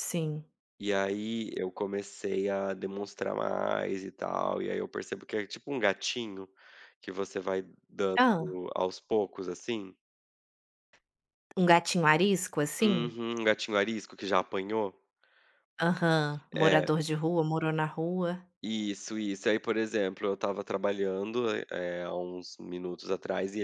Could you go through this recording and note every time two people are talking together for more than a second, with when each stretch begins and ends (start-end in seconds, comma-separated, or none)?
none